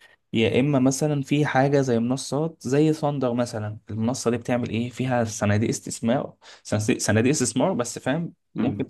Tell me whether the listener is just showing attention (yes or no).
yes